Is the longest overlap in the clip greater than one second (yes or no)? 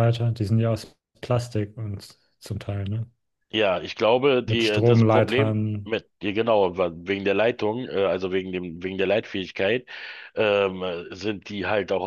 yes